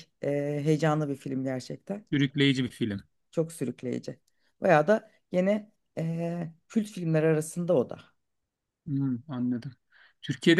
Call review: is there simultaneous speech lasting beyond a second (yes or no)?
no